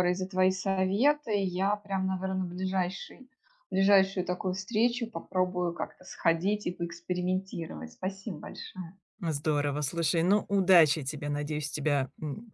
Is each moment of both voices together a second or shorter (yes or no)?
yes